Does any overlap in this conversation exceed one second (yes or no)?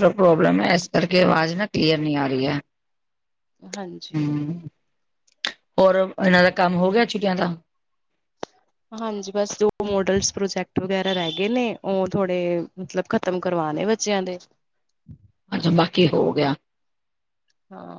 no